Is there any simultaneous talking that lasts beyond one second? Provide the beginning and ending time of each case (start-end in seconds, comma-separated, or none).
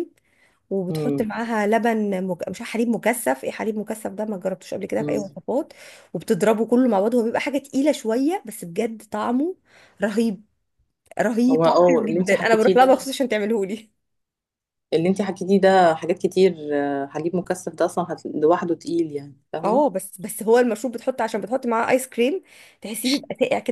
11.5-13.1